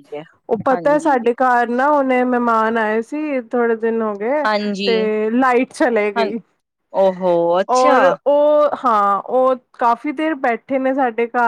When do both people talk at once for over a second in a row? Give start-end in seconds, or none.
none